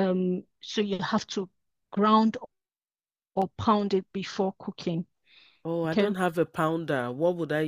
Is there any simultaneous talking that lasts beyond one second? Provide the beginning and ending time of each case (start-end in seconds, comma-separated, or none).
none